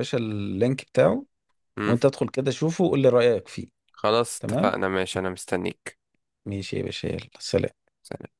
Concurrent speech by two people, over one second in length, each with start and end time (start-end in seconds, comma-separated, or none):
none